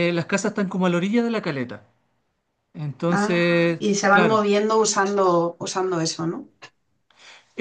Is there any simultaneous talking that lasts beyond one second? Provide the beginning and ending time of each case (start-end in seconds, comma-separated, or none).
3.1-4.4